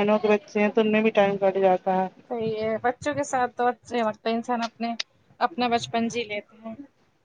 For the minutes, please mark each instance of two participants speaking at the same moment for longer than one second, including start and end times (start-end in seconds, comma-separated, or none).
none